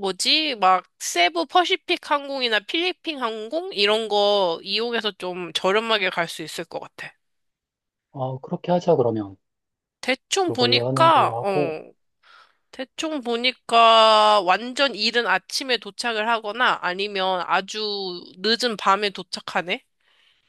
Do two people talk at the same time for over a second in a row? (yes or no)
yes